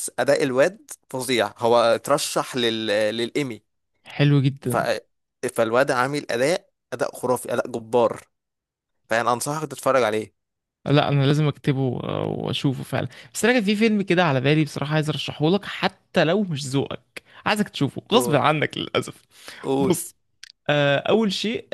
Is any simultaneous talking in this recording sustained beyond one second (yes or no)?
no